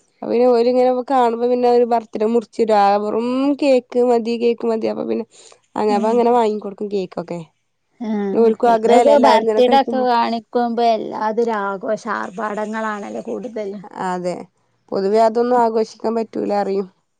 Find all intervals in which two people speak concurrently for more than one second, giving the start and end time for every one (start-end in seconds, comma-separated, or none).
8.4-10.1